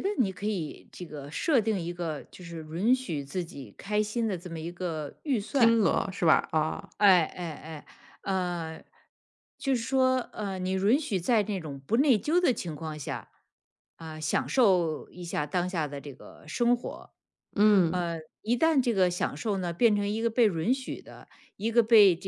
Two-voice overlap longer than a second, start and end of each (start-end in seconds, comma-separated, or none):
none